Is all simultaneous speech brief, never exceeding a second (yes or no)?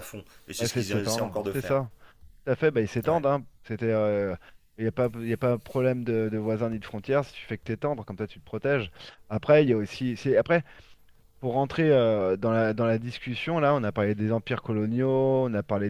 no